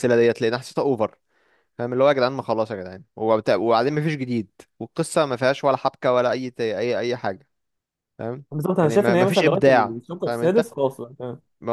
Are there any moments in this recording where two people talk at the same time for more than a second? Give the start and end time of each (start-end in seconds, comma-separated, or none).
8.5-10.7